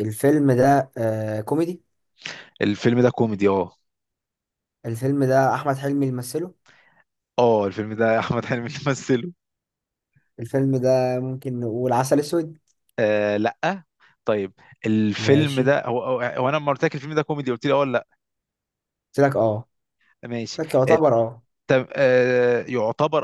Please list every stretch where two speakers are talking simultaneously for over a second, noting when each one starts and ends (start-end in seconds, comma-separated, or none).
none